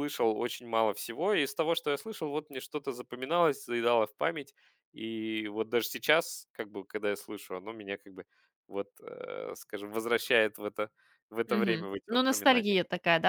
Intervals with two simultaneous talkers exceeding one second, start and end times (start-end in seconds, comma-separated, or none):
11.5-12.8